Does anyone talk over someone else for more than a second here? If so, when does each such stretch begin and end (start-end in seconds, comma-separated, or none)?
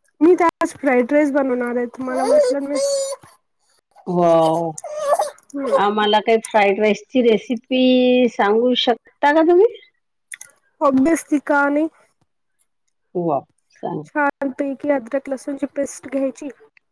none